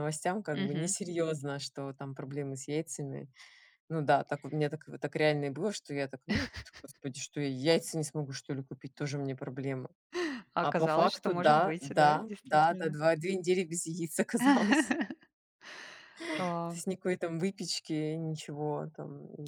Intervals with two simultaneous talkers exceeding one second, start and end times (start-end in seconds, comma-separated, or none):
10.6-13.0